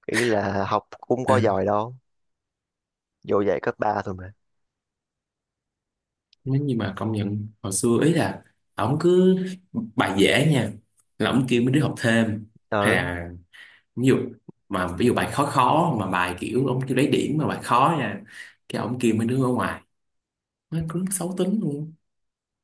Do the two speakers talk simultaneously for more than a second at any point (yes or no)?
no